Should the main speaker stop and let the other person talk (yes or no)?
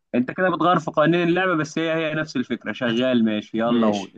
yes